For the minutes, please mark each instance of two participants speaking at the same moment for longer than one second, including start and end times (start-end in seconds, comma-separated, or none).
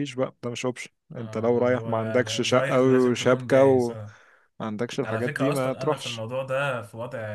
1.1-4.0, 5.0-6.2